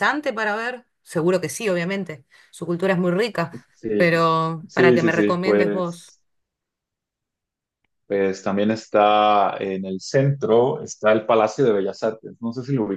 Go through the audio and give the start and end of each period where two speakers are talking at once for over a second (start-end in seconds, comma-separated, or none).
4.7-6.1